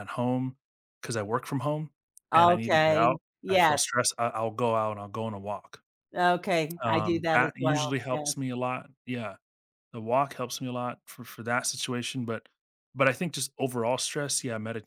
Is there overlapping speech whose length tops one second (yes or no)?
yes